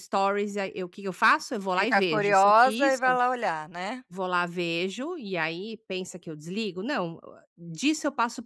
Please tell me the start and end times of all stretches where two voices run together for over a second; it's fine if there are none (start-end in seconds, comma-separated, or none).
1.7-3.0